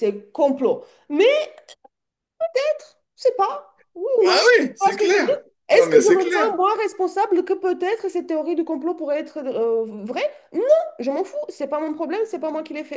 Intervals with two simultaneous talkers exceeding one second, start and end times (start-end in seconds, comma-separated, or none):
4.2-6.5